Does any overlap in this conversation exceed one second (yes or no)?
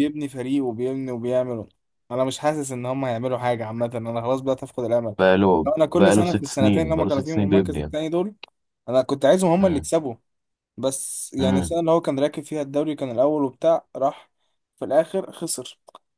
yes